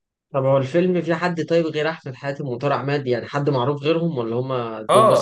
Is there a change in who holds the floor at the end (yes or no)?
yes